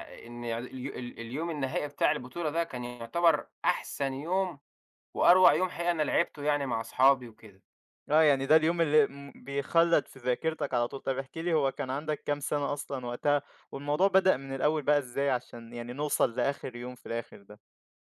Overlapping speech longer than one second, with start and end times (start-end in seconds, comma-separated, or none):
none